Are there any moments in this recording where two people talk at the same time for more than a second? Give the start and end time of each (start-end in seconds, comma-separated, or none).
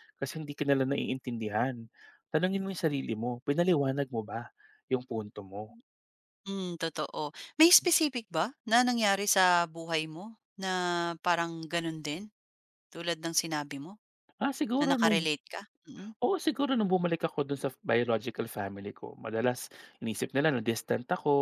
none